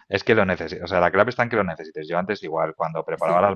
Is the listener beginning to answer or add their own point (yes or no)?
no